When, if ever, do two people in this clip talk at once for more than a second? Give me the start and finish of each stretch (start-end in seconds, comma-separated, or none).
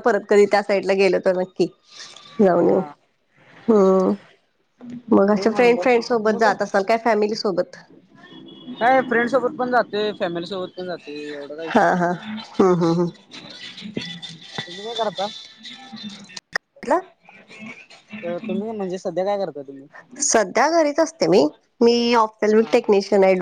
5.3-6.5